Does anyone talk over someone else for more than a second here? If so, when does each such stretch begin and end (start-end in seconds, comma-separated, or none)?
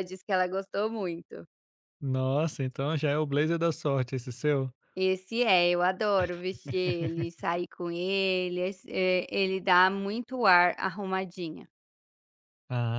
none